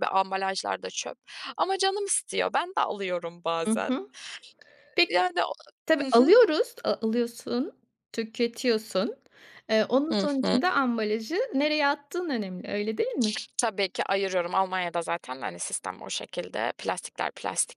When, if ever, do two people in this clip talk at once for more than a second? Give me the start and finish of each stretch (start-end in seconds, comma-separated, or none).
none